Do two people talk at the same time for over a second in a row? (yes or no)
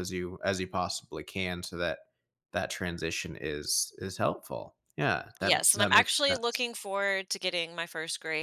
yes